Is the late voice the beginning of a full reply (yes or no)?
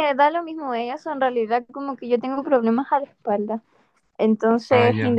no